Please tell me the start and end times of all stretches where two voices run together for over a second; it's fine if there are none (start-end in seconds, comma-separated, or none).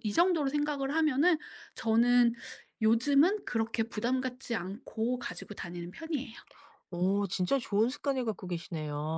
none